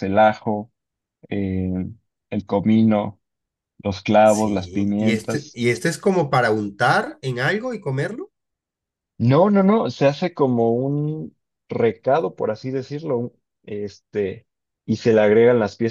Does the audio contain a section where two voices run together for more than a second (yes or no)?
yes